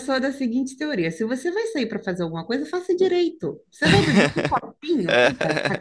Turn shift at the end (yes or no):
no